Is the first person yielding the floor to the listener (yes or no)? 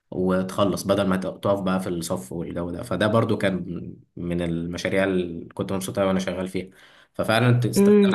yes